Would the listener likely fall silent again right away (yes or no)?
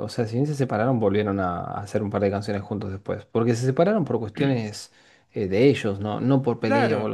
no